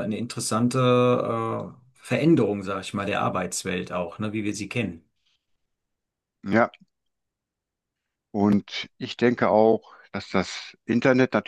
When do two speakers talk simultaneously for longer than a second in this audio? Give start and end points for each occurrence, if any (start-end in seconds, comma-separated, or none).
none